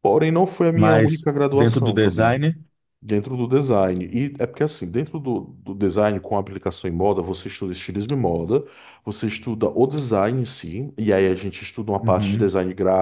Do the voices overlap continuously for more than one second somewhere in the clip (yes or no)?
yes